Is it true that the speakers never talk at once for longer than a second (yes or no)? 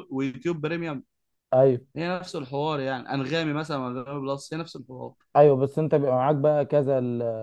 yes